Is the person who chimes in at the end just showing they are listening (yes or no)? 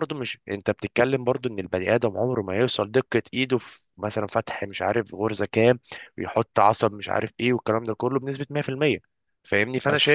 yes